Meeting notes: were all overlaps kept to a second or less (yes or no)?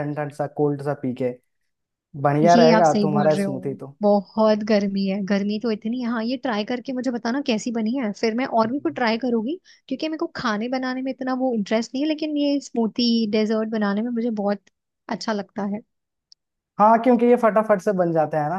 no